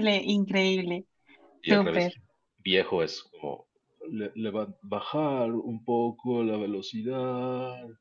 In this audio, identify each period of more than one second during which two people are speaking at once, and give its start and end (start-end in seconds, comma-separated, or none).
none